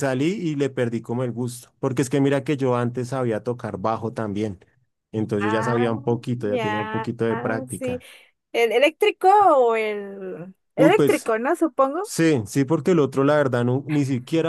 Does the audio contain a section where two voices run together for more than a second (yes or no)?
yes